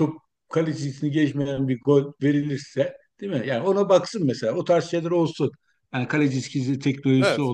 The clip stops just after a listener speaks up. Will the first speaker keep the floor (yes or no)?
yes